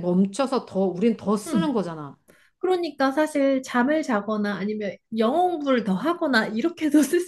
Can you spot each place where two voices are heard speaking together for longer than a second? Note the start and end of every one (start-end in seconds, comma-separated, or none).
none